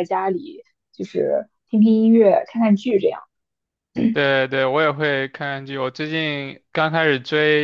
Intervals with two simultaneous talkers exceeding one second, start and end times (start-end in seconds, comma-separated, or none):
none